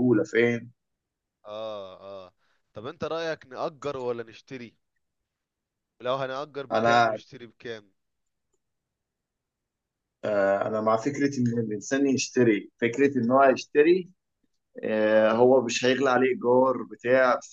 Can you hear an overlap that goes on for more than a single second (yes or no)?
no